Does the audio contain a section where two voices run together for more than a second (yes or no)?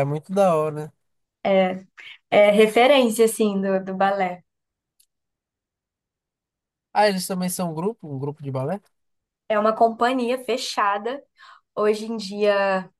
no